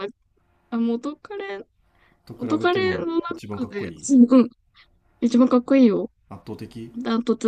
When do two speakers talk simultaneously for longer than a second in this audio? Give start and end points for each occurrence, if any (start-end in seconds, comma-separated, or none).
2.4-3.9